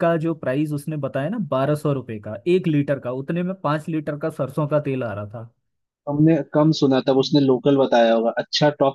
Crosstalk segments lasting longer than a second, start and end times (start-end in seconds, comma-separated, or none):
none